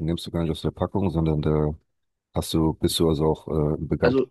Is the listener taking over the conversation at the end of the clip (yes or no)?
yes